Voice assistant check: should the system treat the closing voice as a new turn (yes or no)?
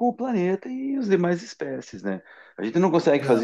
no